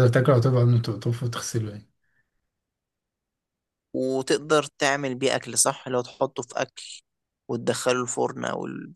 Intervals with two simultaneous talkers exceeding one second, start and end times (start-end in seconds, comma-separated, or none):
none